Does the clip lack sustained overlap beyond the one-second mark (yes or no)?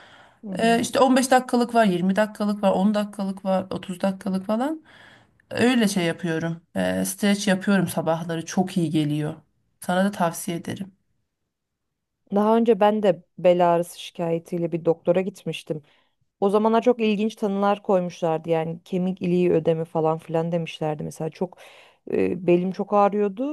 yes